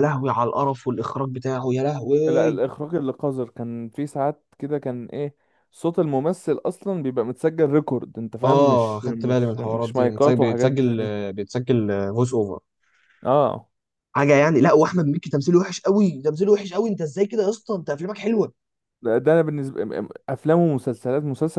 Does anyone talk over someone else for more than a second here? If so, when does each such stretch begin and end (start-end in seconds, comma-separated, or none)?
8.4-11.3